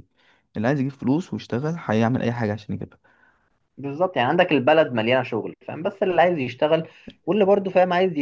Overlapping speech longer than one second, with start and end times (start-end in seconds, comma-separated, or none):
none